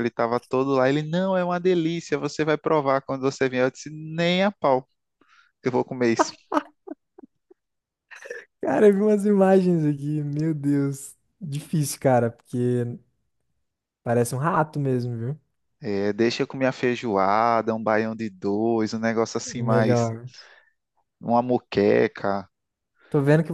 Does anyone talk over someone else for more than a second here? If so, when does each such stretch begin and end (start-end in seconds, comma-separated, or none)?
none